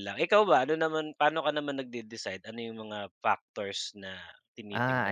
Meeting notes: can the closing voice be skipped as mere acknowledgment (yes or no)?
no